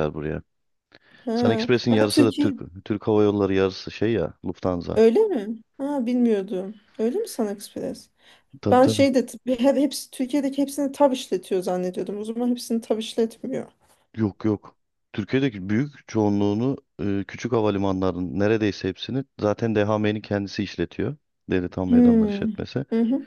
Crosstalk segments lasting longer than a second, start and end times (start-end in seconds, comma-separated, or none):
1.3-2.5